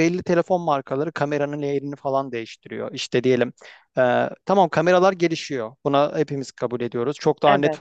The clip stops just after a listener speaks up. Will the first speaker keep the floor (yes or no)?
yes